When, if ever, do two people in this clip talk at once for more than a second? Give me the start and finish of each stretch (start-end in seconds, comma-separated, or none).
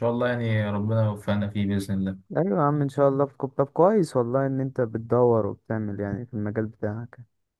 none